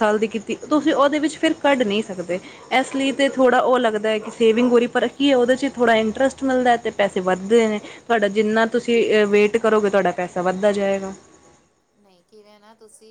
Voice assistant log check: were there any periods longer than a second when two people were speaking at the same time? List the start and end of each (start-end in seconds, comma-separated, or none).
none